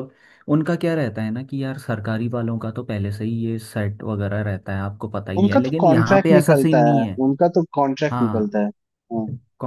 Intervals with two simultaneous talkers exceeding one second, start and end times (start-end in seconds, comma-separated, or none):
5.4-7.2